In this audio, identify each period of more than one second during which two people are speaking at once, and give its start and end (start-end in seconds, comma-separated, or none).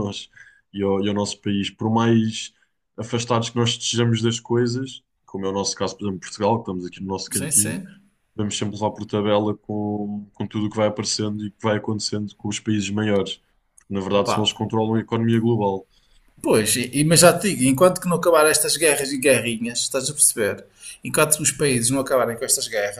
none